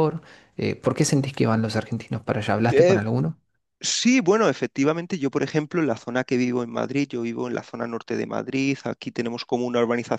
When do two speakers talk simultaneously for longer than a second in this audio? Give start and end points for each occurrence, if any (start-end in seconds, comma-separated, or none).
none